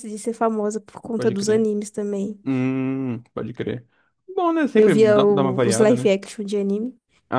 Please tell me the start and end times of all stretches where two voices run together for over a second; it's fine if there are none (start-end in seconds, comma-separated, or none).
4.8-6.1